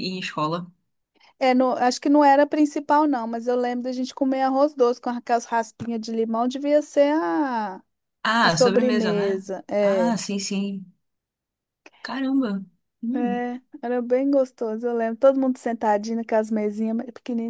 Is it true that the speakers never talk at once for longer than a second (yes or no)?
no